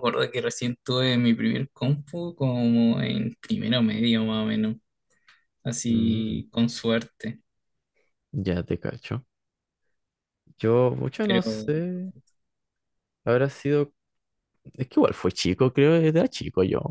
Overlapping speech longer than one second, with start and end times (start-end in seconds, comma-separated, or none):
none